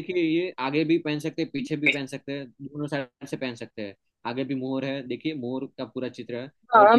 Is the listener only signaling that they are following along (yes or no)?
no